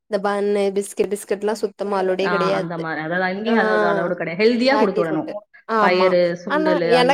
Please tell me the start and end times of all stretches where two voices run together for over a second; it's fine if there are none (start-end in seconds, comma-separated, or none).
none